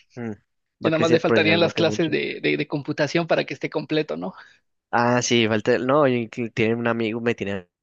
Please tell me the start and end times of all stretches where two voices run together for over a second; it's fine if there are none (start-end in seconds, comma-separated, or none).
0.8-2.1